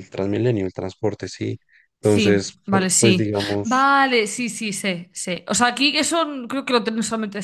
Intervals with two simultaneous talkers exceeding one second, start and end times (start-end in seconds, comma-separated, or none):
2.0-3.9